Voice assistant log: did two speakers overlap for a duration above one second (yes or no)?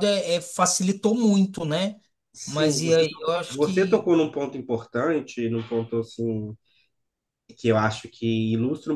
yes